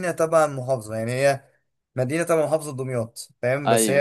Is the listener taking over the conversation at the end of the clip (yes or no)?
no